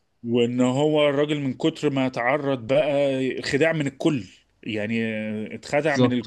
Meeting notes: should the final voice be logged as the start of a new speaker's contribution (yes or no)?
no